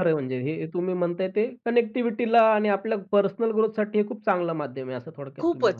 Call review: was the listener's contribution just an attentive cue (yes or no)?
no